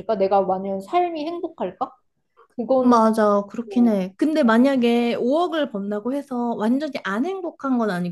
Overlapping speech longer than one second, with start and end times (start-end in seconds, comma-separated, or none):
none